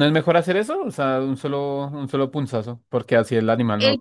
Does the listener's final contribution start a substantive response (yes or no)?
yes